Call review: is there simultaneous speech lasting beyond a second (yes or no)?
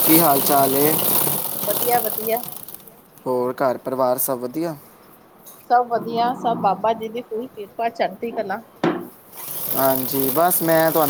no